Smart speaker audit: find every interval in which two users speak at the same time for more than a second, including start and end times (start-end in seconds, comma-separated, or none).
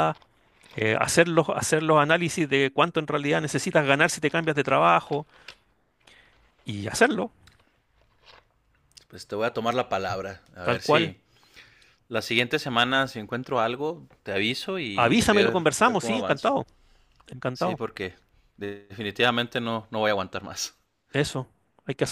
14.9-16.6